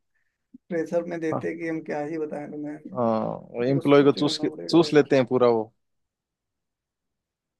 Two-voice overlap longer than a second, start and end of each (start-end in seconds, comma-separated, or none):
3.7-5.1